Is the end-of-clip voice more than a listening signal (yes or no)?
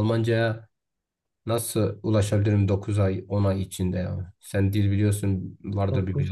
yes